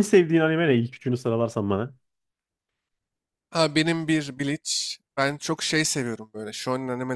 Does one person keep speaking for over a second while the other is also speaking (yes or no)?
no